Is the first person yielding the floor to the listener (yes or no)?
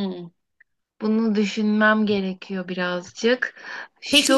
yes